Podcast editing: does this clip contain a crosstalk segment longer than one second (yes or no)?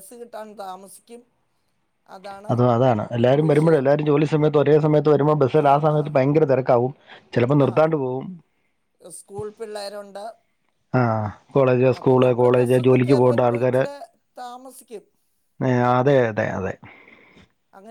yes